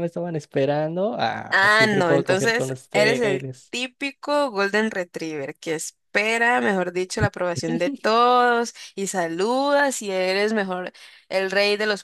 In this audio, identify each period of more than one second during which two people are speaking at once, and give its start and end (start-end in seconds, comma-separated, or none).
1.5-3.7